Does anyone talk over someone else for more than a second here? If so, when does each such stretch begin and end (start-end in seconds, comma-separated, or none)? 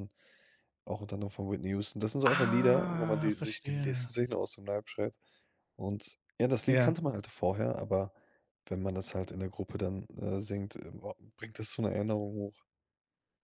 2.2-4.1